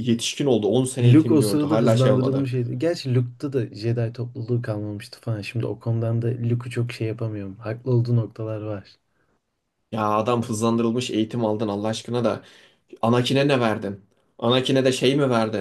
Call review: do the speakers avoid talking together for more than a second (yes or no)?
no